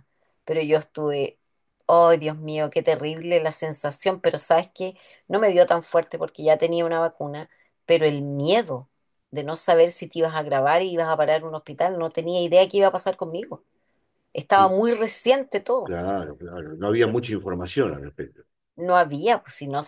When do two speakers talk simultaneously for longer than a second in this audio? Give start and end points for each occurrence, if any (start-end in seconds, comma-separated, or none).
none